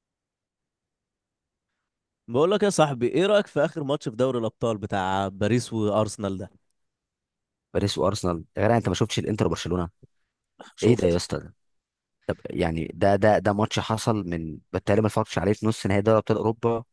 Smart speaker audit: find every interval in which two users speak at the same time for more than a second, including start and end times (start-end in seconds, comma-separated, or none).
none